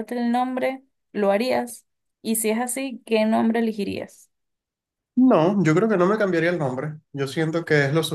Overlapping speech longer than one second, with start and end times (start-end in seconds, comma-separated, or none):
none